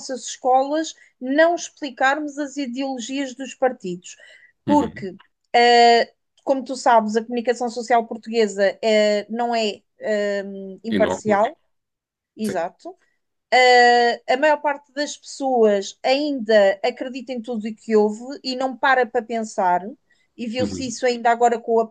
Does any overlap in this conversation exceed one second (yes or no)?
no